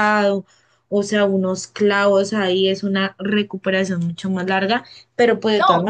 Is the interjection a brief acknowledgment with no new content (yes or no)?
yes